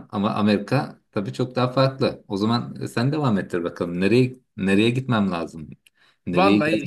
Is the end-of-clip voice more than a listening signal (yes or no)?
yes